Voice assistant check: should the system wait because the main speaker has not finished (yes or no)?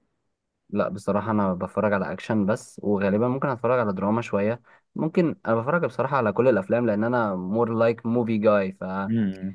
yes